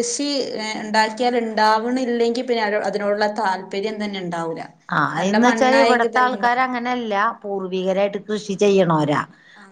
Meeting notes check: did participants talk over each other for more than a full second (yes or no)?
yes